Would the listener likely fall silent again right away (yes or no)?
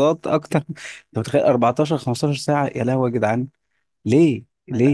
no